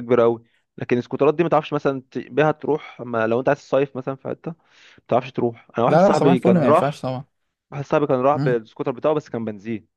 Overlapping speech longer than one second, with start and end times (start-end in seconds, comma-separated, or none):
5.9-7.1